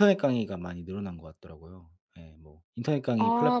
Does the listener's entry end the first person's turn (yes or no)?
no